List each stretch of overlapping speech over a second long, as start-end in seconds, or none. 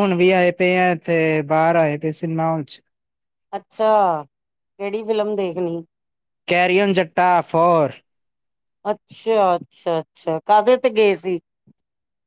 none